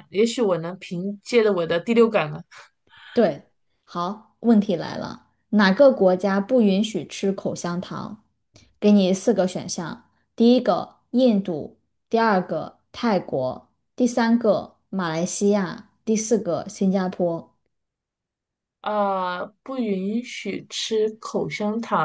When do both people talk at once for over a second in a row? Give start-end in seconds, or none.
none